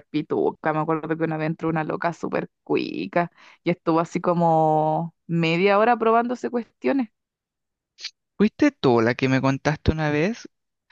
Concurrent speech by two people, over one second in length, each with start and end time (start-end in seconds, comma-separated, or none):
none